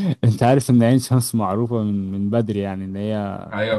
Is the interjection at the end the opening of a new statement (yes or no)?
no